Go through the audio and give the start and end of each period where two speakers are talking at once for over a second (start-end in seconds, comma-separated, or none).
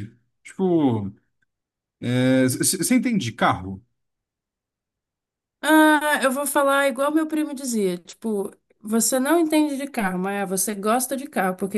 none